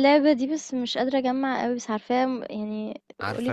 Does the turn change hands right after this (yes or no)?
yes